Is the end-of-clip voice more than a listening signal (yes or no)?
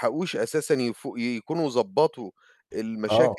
no